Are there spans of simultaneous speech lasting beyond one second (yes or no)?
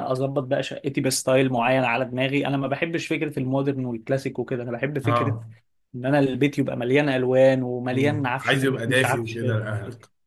yes